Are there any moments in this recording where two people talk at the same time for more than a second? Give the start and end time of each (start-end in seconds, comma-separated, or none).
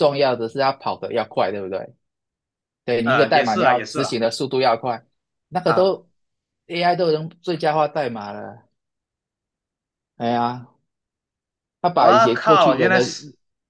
3.0-4.2, 11.9-13.2